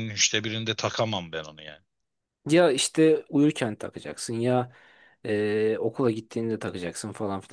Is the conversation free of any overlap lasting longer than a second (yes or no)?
yes